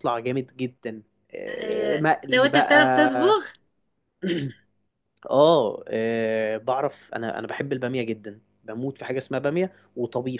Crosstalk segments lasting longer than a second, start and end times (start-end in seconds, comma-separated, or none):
1.6-3.4